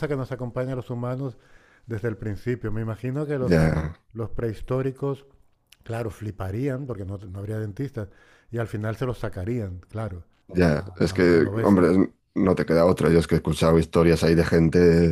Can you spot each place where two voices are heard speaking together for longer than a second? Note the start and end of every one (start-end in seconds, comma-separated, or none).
10.5-11.9